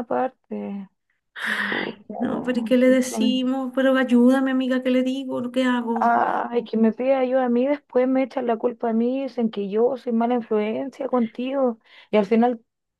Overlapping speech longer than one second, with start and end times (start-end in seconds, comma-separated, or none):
1.7-3.4